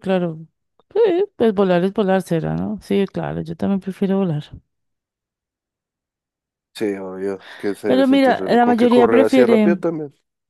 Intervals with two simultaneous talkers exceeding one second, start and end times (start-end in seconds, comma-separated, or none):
7.8-9.8